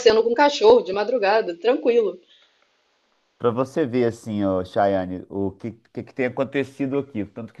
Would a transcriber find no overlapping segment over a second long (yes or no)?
yes